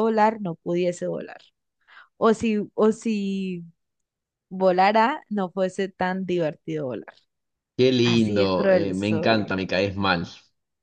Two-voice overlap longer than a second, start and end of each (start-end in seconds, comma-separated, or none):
8.0-9.5